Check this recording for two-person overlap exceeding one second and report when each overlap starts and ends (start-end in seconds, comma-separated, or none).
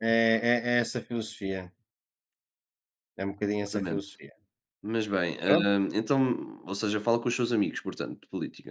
none